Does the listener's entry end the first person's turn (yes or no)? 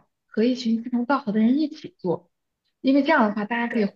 no